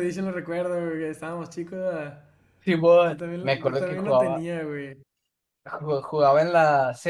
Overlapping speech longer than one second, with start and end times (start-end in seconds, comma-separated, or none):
3.1-4.5